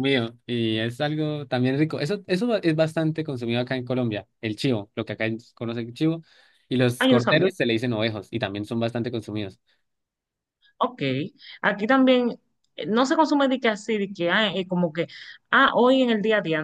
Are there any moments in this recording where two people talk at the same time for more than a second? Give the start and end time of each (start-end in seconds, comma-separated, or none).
none